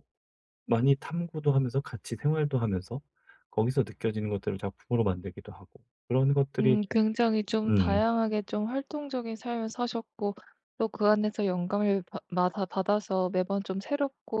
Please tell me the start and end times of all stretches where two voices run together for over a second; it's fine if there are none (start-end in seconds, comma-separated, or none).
none